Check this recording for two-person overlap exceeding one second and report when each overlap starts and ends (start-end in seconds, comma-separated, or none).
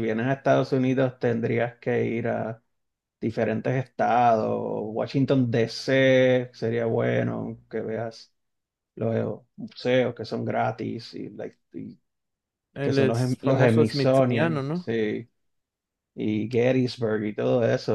12.8-14.9